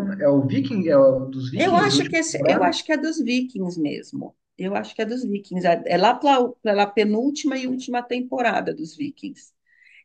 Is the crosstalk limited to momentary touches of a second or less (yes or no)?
no